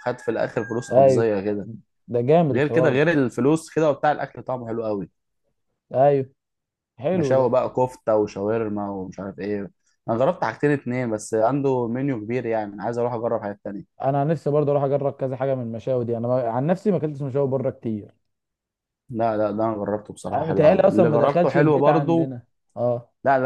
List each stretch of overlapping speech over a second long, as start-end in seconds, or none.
20.3-22.3